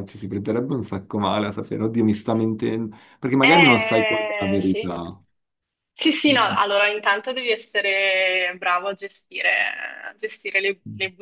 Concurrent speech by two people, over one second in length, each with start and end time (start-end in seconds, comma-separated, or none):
3.4-4.9